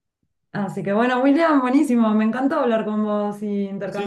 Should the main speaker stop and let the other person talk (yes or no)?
yes